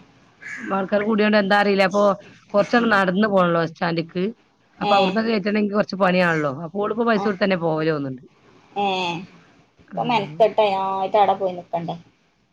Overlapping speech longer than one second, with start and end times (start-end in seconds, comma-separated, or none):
none